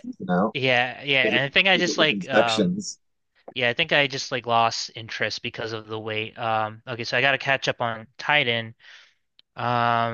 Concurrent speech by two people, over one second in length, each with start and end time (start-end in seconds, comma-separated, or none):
1.2-2.9